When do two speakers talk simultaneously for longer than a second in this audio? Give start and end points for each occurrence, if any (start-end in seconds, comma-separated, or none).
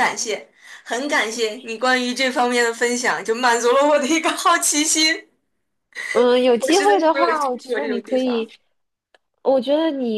6.6-8.5